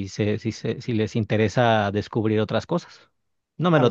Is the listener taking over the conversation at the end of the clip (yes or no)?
yes